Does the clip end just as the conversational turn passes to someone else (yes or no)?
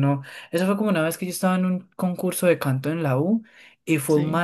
no